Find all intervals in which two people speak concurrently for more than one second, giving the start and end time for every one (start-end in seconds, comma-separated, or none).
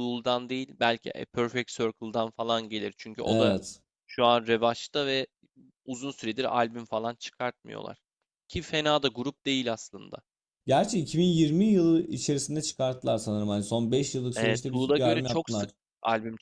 14.3-15.7